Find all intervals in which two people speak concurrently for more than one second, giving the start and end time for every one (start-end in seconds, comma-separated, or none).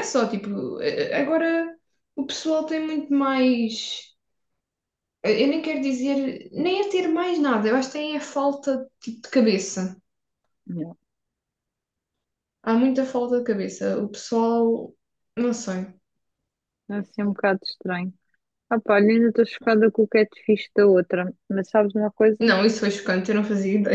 none